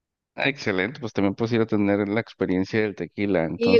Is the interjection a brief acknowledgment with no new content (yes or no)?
no